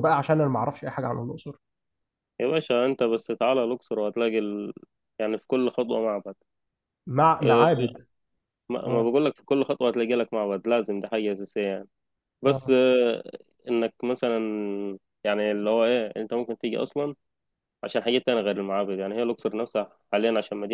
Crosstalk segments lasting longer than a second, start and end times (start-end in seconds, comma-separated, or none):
none